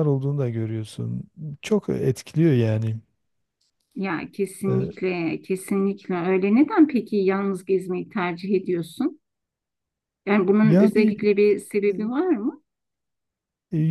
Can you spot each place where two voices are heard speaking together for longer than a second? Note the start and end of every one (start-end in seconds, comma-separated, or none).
none